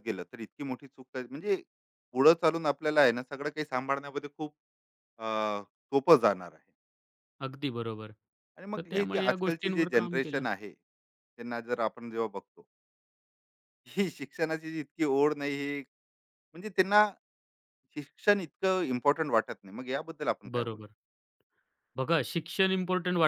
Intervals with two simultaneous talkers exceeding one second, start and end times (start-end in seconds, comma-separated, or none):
8.8-10.4